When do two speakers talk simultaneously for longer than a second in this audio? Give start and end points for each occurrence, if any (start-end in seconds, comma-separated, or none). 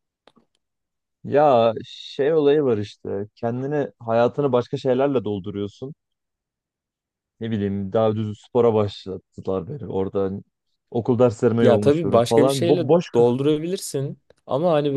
11.6-13.4